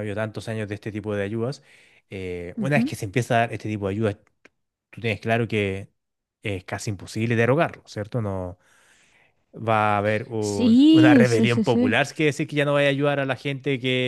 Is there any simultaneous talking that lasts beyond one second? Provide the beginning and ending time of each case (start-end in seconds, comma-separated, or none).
10.4-12.0